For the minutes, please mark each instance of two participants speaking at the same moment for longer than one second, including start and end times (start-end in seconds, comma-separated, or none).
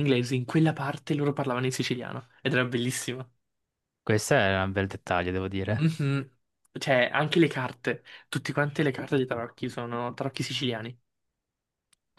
none